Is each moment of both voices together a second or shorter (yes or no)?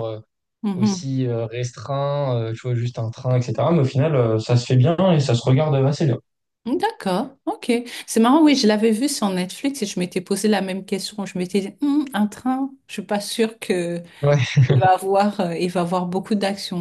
yes